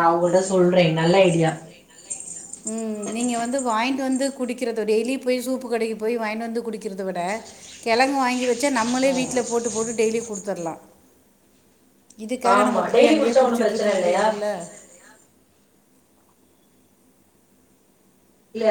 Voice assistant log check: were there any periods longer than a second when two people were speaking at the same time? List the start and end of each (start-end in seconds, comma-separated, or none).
12.6-14.2